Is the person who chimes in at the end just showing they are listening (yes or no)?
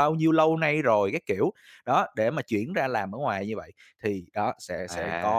yes